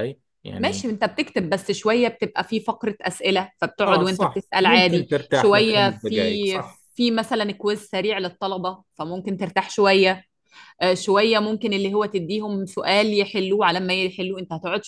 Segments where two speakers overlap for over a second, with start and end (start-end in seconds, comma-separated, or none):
3.9-6.8